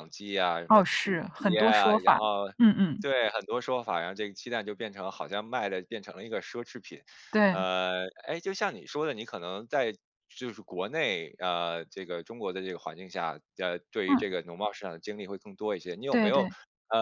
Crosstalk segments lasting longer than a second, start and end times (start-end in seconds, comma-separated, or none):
0.7-2.2